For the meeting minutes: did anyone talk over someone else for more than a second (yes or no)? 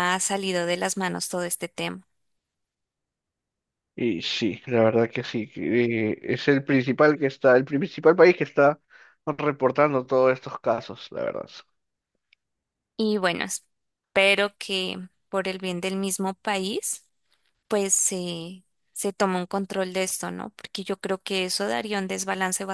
no